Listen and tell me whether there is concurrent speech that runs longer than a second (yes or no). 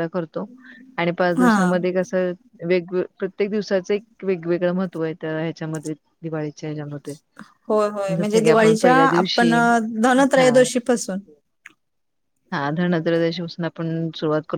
yes